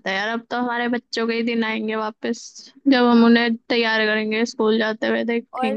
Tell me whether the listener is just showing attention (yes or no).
no